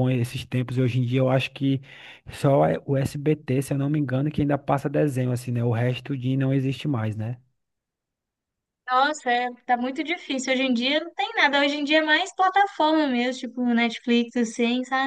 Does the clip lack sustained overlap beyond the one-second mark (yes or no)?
yes